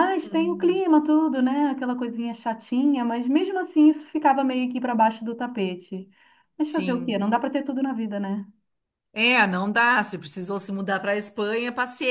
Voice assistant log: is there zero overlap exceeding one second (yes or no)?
yes